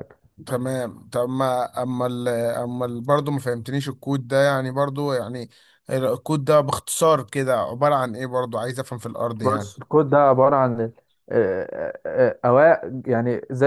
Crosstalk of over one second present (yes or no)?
no